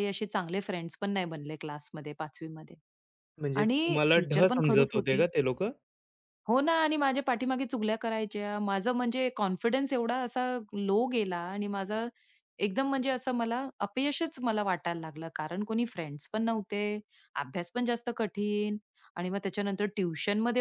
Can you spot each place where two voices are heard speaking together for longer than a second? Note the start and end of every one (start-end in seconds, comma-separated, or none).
3.6-5.2